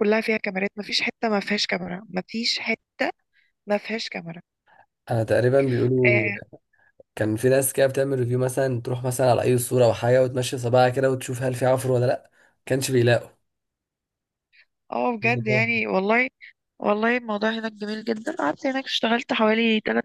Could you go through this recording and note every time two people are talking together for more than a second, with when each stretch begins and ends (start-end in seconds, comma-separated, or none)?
none